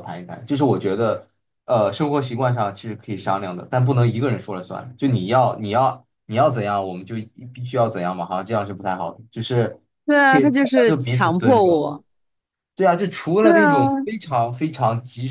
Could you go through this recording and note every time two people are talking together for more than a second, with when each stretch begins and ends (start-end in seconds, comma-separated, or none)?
10.3-11.9